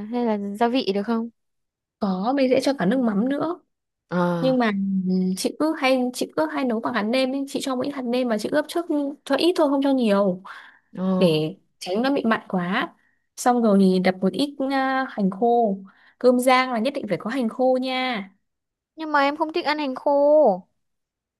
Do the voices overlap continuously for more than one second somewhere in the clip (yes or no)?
no